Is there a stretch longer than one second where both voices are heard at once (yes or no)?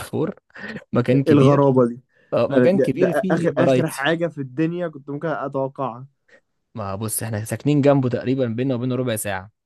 yes